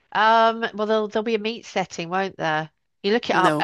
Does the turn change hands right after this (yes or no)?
no